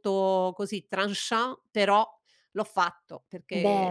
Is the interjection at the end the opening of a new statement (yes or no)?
no